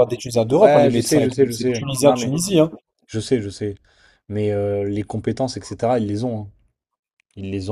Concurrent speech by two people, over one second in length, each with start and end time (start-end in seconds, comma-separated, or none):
0.6-2.3